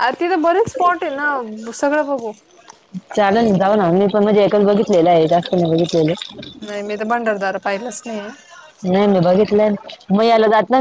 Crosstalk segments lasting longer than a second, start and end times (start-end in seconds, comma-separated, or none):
none